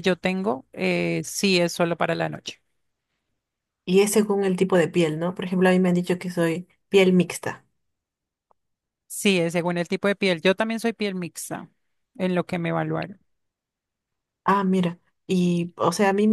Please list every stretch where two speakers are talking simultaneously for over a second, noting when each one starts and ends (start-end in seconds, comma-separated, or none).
none